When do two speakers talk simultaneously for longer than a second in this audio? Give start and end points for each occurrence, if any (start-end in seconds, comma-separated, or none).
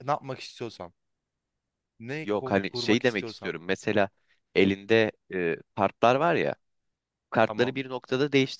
2.2-3.6